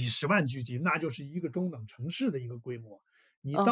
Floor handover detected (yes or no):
yes